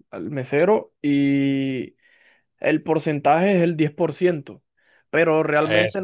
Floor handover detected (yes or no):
no